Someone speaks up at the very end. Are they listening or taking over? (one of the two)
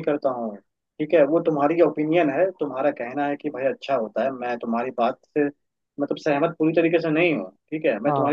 listening